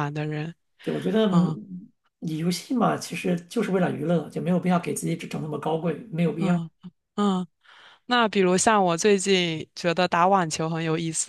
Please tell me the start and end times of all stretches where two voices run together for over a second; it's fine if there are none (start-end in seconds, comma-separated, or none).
none